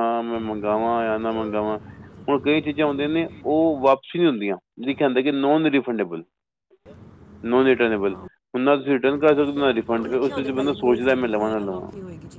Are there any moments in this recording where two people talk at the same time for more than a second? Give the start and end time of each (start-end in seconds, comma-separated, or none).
10.0-11.2